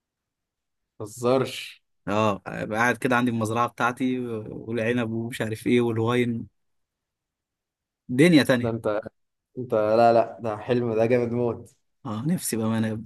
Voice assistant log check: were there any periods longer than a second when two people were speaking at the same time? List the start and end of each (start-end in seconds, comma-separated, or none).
none